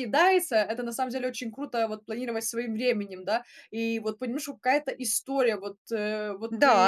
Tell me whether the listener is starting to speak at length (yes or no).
yes